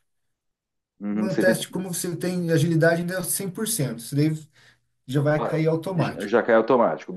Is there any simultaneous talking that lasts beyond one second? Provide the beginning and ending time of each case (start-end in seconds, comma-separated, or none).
none